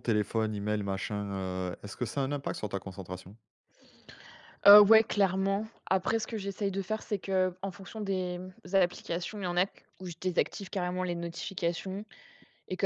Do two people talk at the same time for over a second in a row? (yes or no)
no